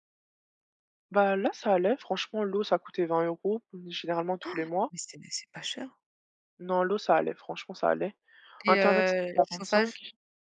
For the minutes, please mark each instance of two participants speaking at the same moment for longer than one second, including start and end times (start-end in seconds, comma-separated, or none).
8.7-10.0